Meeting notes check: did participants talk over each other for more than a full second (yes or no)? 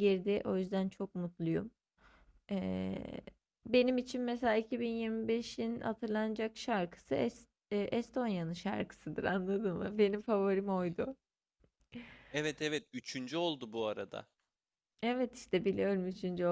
no